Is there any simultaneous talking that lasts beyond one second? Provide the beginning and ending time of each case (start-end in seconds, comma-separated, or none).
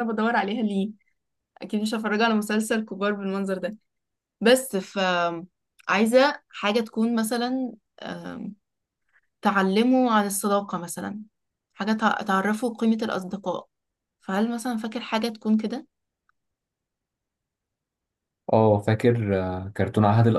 none